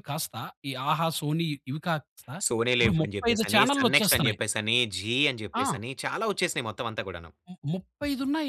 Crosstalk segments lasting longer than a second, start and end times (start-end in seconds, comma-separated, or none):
2.8-4.4